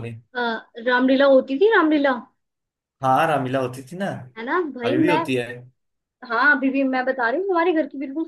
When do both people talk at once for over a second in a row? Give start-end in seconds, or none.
none